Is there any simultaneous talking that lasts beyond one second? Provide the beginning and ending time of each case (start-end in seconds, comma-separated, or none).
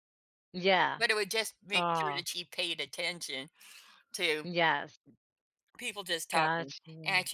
none